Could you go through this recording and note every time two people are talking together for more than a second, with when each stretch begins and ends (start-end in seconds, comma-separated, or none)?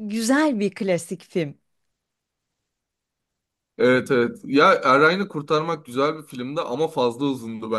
none